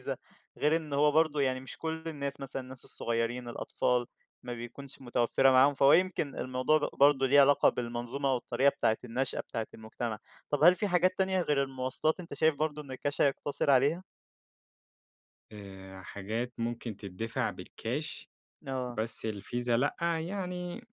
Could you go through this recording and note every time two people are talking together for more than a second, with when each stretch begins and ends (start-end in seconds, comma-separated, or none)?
none